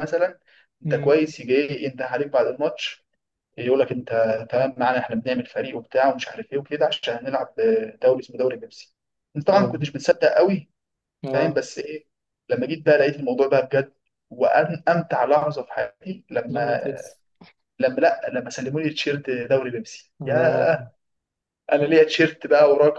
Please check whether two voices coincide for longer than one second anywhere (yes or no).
no